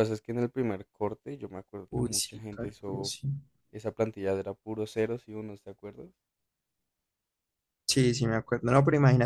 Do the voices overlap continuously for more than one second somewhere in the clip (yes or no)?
yes